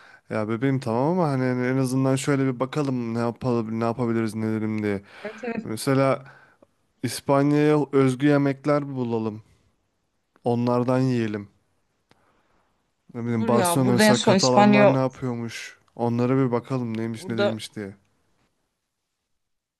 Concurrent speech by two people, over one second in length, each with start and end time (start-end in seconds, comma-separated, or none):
13.2-15.0